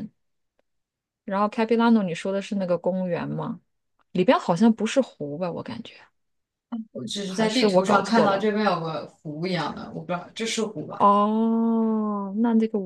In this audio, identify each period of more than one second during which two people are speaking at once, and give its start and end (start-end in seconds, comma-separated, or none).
7.2-8.5